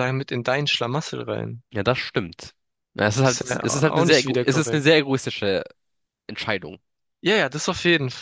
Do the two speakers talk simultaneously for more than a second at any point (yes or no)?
yes